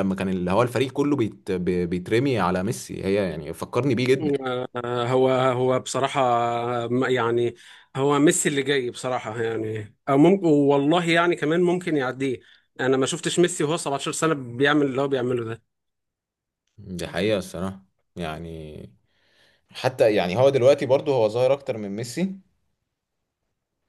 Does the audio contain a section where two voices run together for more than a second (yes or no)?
no